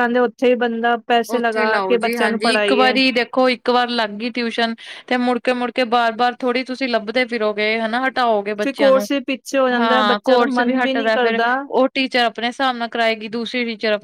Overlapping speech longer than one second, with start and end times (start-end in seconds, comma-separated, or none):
1.4-2.9, 9.8-11.4